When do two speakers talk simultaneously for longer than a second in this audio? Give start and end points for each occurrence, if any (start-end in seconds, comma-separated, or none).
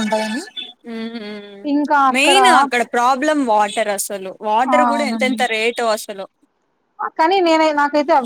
none